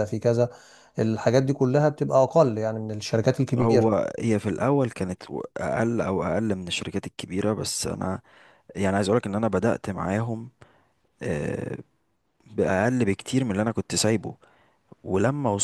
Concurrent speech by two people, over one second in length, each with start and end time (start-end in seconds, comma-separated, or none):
none